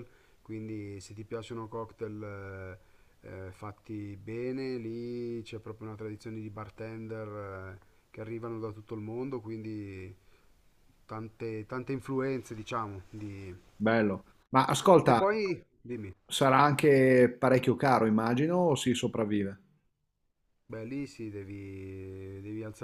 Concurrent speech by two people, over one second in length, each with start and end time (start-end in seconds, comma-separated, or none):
none